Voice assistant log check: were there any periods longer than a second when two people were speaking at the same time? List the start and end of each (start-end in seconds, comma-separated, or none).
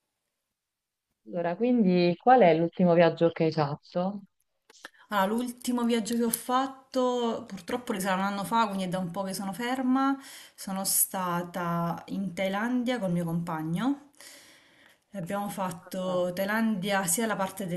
none